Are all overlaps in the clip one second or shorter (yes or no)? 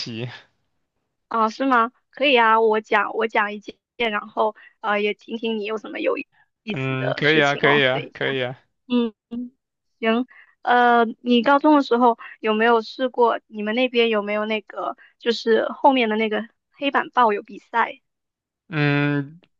no